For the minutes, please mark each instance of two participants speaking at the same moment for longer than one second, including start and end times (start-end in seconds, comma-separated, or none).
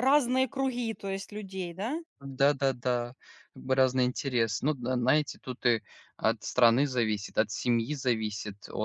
none